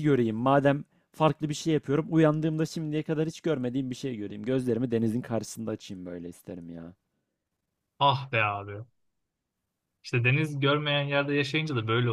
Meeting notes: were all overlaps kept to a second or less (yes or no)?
yes